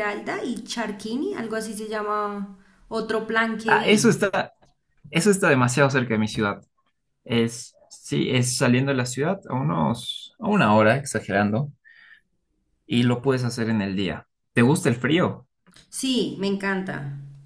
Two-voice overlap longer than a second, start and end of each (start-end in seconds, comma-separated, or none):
none